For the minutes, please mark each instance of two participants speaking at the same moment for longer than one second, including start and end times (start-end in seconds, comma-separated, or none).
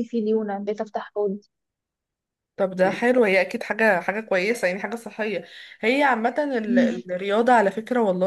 none